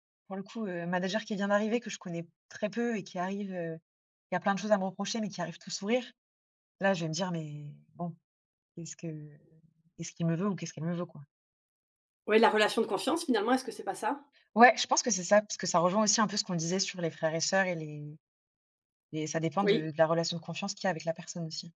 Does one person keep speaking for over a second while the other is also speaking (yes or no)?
no